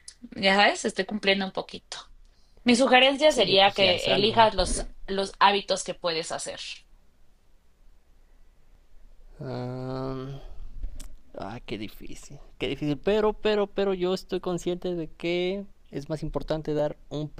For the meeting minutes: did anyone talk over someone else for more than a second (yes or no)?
yes